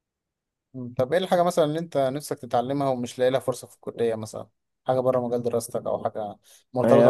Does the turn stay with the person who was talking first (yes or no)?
no